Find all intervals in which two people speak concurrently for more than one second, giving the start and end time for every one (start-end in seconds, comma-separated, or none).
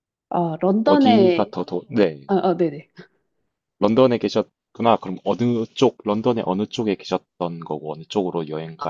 none